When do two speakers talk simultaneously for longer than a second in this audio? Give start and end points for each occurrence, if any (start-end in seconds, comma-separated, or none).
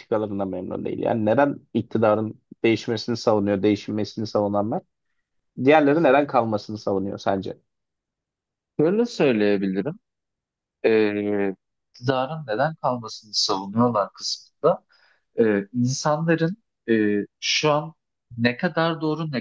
none